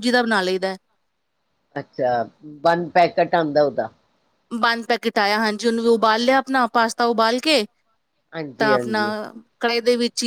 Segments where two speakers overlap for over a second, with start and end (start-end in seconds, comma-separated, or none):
none